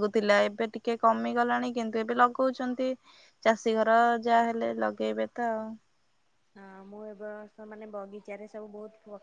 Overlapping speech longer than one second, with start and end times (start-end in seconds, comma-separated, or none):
none